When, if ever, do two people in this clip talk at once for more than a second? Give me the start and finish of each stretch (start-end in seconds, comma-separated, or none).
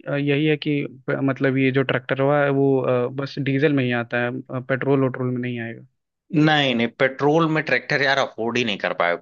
none